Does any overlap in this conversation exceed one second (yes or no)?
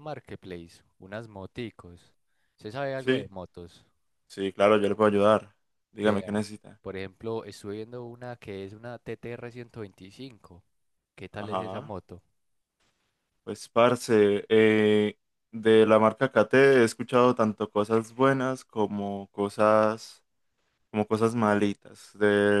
no